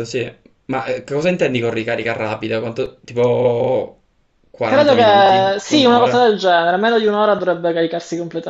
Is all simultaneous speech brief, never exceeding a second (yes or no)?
no